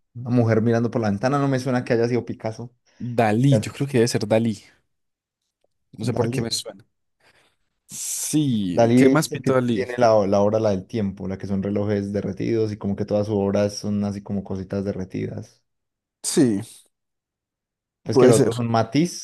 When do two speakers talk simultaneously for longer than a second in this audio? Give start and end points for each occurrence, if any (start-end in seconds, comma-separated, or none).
8.7-9.9